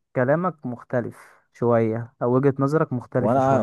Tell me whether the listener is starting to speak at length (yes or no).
yes